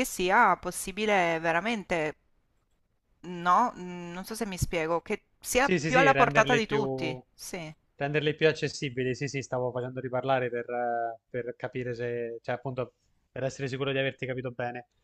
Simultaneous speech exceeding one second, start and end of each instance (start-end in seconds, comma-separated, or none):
5.6-7.2